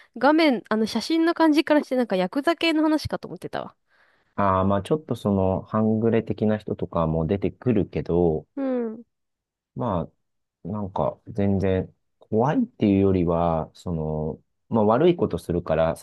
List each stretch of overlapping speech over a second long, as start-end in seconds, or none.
none